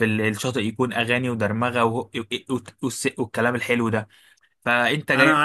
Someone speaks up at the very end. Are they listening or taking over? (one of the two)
taking over